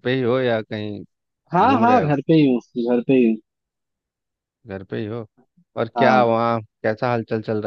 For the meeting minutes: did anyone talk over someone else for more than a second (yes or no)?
no